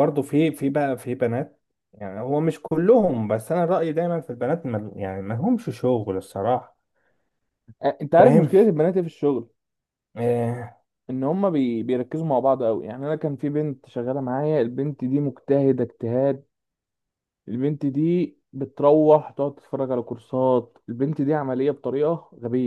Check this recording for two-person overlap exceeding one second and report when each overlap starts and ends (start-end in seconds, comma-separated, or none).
none